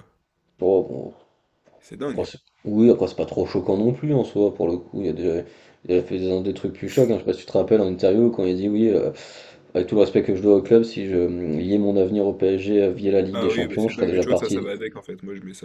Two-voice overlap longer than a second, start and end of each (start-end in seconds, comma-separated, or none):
13.3-14.7